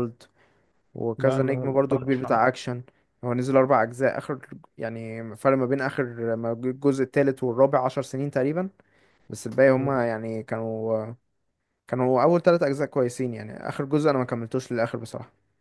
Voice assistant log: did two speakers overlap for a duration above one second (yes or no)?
yes